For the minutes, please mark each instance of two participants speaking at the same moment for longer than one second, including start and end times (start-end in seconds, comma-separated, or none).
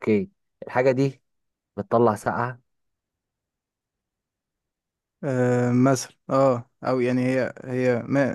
none